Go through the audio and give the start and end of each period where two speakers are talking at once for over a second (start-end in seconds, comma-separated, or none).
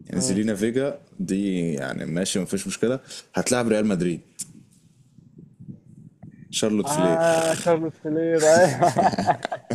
none